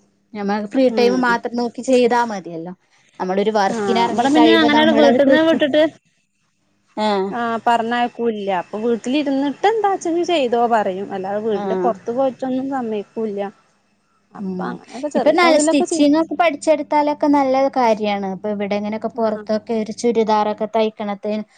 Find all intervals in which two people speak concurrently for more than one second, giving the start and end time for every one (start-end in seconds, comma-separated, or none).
3.8-5.6